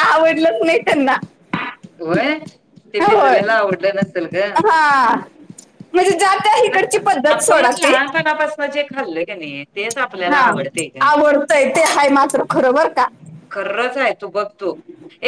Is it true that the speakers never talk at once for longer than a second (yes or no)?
yes